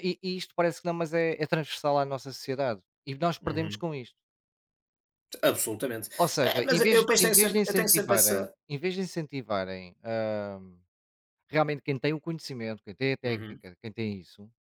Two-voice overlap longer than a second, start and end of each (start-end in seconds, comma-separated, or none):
6.2-8.5